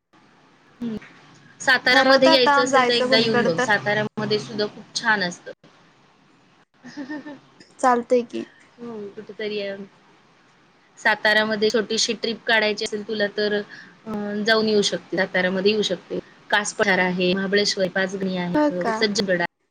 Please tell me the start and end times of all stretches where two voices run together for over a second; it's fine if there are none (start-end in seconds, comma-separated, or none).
1.9-3.6